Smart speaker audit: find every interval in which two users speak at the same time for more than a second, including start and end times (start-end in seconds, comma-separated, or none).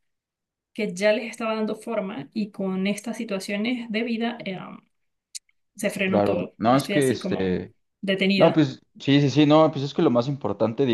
6.0-7.6